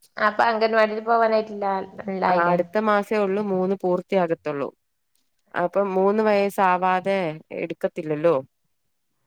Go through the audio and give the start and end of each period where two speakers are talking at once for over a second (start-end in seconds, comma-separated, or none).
none